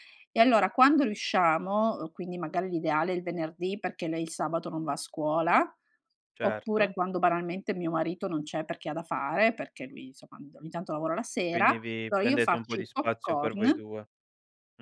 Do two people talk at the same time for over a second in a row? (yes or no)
yes